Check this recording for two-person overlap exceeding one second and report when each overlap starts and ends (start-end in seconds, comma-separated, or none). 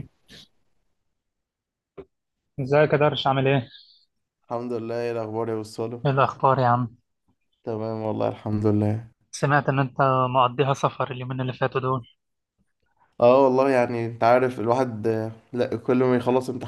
none